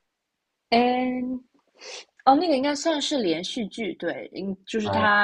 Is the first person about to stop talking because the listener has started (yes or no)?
no